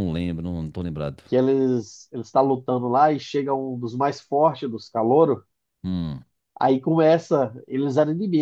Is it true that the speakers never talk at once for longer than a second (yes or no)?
yes